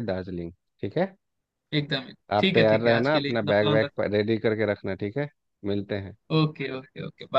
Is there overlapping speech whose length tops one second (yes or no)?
yes